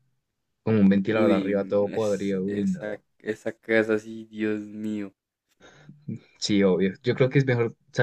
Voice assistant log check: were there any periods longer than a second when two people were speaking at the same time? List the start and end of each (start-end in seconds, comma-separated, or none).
1.1-3.0